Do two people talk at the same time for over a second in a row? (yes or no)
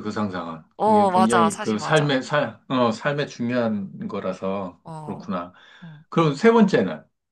yes